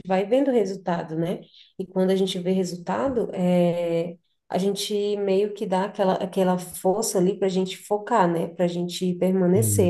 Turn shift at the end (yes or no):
no